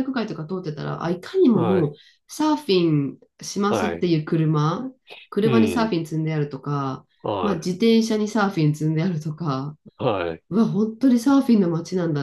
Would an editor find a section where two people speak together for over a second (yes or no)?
no